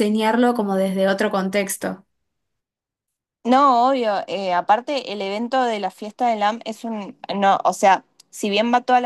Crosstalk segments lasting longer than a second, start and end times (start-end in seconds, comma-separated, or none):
none